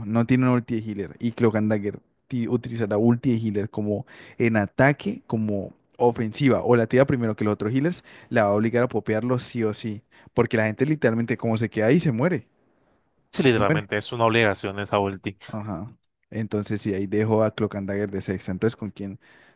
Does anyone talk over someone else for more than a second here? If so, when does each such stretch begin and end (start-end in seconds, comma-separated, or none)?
none